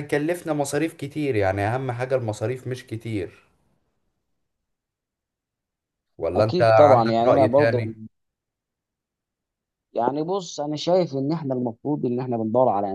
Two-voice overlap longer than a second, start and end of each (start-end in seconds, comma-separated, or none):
6.4-7.8